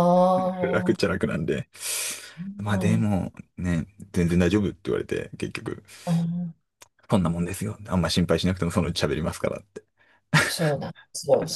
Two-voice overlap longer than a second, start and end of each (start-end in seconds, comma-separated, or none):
none